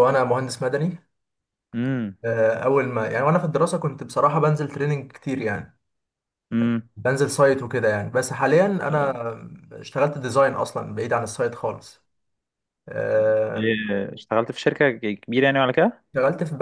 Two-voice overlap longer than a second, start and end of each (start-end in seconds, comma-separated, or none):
none